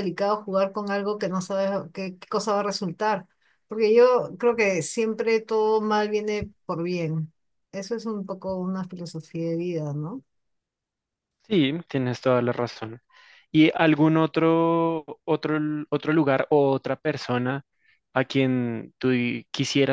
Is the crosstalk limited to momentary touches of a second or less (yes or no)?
yes